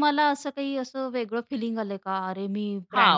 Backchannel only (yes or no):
no